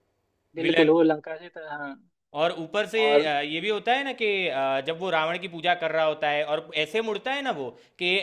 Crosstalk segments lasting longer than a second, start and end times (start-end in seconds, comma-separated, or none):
none